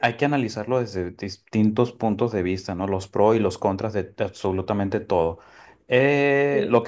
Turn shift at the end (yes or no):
no